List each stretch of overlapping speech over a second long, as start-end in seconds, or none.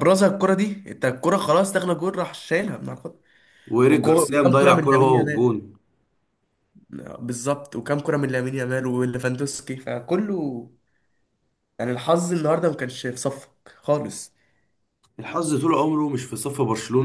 3.9-5.5